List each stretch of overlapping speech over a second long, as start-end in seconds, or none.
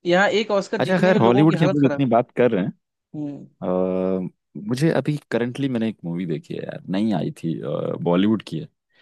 0.8-2.0